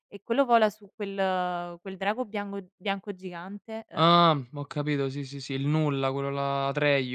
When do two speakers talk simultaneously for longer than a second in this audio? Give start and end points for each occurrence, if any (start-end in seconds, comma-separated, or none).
none